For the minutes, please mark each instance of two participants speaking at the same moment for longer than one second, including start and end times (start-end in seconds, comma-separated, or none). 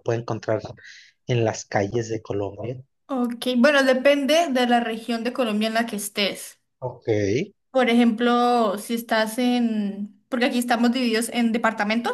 none